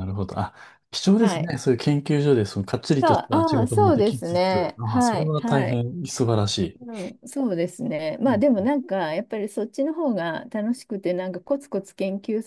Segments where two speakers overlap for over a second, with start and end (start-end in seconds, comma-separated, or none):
3.0-5.8